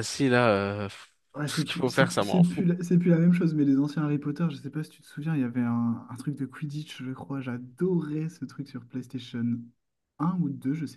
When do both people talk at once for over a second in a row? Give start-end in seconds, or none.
1.3-2.6